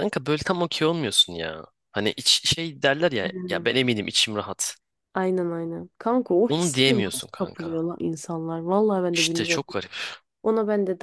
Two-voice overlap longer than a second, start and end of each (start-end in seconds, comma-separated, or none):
6.5-7.8